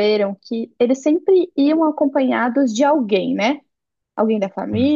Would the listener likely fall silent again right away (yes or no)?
yes